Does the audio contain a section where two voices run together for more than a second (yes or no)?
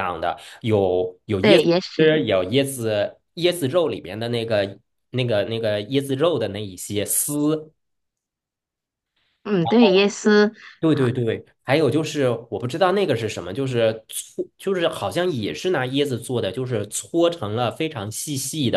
no